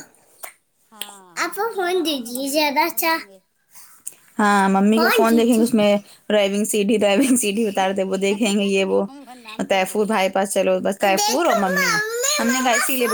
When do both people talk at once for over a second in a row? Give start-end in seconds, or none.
1.4-3.2